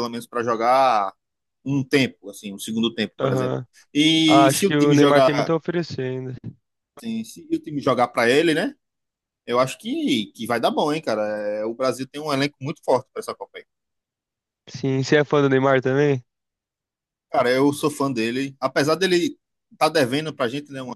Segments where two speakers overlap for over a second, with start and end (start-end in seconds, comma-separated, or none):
4.3-5.6